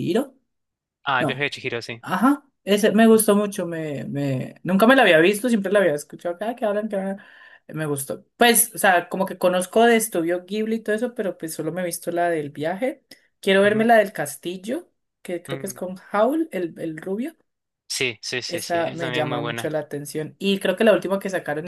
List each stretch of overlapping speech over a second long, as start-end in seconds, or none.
18.5-19.7